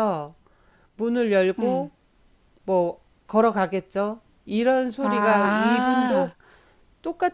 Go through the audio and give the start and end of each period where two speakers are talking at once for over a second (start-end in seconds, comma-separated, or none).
5.0-6.3